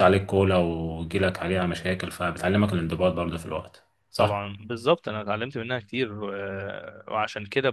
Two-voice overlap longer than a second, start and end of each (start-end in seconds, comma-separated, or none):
none